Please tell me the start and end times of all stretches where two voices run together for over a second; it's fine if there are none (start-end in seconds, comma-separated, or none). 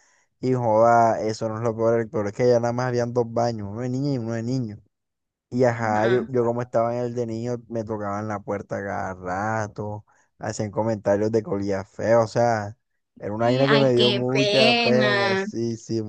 13.4-15.4